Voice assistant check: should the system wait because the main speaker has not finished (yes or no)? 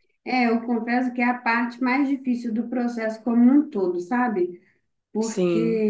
yes